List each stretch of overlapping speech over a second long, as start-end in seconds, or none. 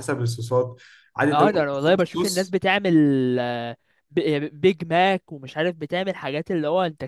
1.3-2.5